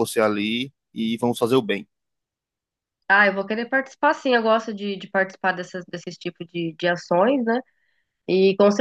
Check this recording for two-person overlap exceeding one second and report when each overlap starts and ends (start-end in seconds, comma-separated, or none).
none